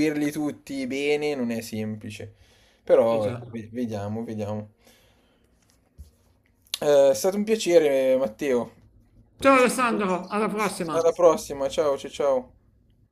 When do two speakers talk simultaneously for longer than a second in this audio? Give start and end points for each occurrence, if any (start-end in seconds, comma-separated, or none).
none